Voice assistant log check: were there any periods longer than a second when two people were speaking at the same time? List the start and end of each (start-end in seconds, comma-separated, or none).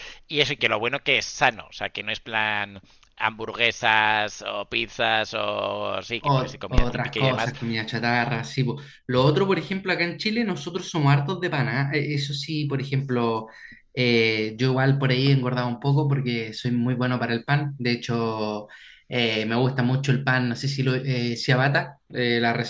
6.2-7.5